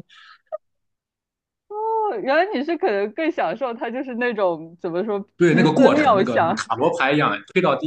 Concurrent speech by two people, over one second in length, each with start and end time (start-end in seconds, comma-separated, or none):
5.4-6.6